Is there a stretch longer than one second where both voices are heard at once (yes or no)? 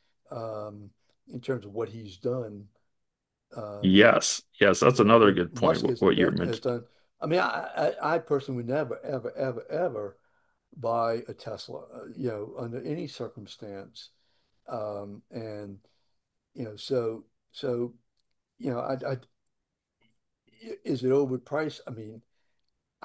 yes